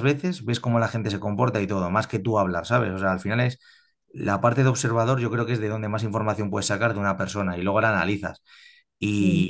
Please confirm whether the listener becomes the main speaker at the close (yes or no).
no